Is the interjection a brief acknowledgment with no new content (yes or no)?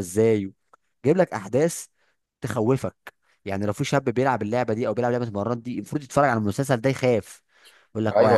no